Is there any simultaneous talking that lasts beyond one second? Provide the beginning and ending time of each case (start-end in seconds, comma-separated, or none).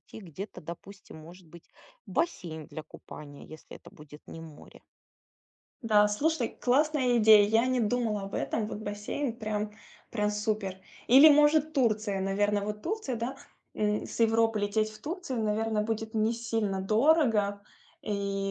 none